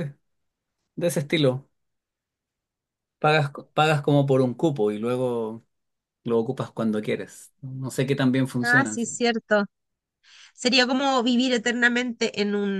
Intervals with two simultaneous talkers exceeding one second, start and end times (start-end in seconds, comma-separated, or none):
none